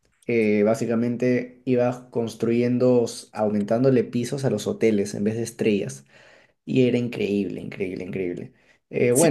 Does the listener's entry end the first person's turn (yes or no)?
yes